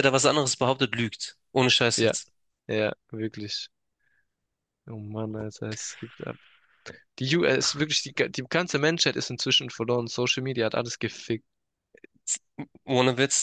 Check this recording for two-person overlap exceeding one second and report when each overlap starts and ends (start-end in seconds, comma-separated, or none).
none